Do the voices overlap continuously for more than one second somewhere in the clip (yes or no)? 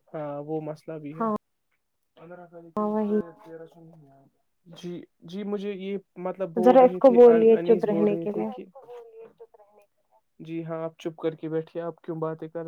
yes